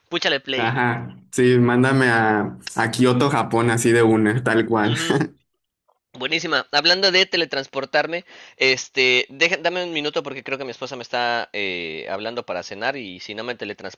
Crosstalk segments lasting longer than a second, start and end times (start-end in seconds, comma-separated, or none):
none